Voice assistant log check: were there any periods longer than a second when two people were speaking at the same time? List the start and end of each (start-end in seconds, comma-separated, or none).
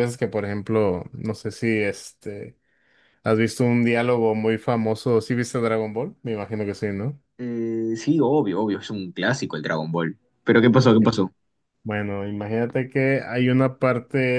none